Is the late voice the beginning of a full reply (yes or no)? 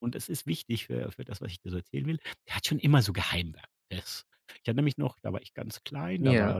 no